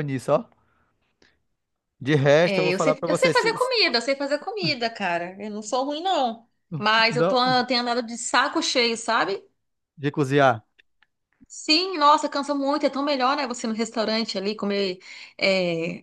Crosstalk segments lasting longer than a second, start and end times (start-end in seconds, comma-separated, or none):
2.4-3.7